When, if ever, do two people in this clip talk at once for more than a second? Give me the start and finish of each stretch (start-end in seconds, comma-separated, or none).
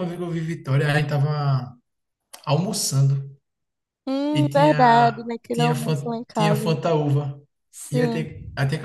4.3-6.8